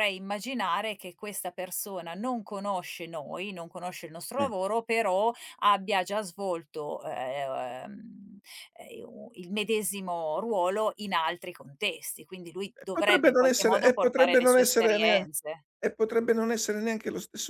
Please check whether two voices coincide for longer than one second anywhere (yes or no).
yes